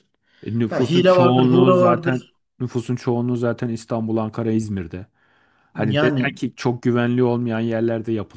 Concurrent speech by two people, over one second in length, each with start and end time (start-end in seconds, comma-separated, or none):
0.7-2.2